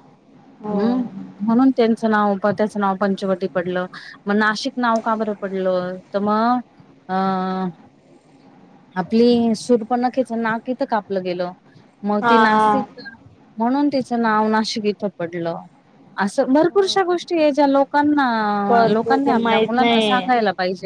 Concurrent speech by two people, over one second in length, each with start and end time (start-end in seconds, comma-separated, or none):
18.7-20.3